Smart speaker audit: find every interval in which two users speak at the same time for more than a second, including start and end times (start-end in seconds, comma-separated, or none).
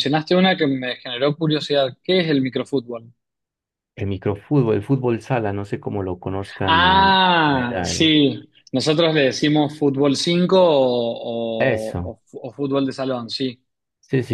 6.6-8.2